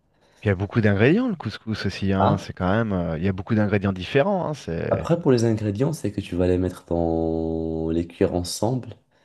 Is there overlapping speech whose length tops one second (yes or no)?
no